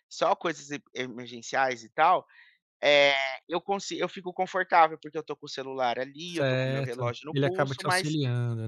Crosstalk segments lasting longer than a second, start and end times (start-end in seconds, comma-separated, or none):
6.3-8.2